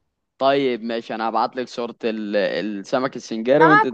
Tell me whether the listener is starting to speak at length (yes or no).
yes